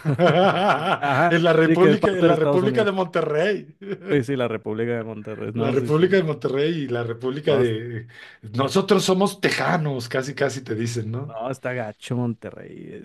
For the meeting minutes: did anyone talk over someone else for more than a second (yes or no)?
yes